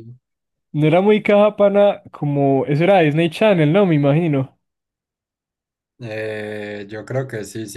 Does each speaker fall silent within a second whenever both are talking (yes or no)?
yes